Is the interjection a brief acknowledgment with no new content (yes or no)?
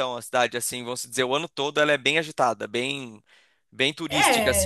no